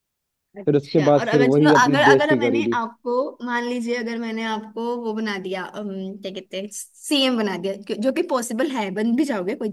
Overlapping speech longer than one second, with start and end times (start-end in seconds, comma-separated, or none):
0.6-2.8